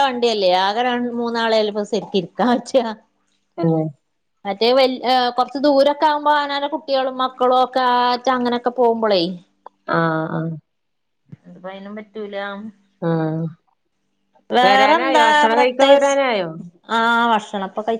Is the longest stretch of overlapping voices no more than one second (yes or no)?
no